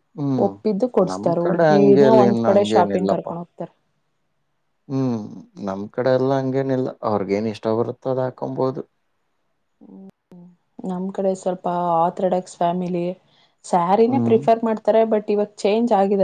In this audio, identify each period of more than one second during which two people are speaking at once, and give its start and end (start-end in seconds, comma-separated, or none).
1.1-3.3